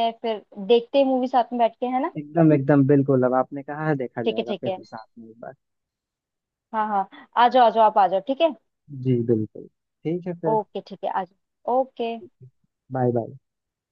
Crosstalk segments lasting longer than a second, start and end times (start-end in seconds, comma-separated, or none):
none